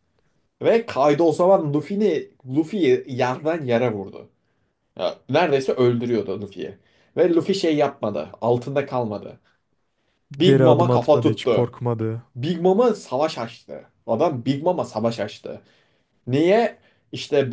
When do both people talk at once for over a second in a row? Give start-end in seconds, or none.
10.4-11.7